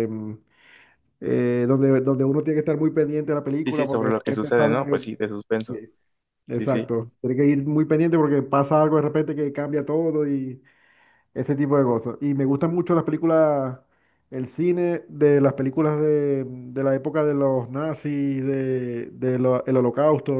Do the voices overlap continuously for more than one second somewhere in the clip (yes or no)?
yes